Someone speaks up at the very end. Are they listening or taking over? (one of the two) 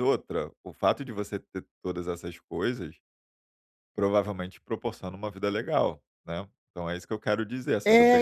taking over